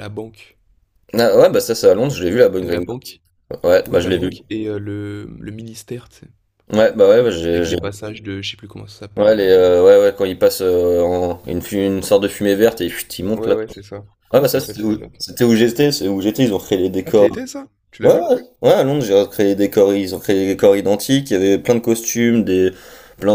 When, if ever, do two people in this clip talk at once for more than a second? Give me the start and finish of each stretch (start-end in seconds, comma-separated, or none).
14.3-15.8